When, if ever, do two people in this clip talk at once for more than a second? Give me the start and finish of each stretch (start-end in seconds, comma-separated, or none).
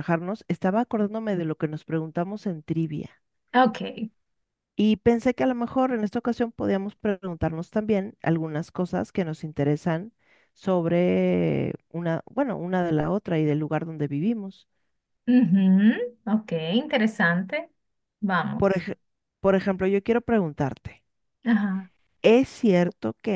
none